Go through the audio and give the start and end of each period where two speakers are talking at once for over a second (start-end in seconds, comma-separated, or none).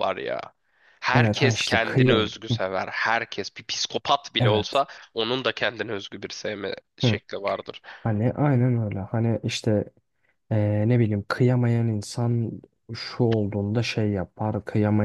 1.1-2.6